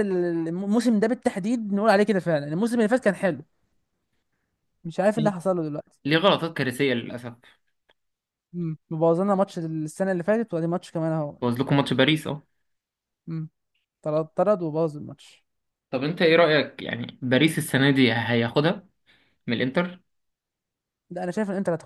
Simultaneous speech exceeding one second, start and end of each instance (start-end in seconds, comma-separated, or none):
none